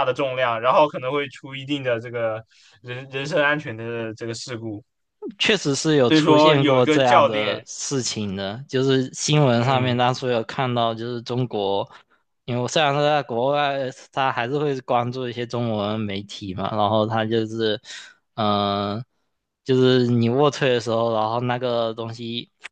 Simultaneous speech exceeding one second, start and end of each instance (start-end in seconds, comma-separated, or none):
6.1-7.7